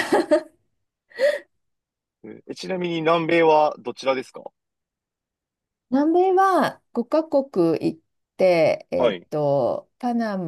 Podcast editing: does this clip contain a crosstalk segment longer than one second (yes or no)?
no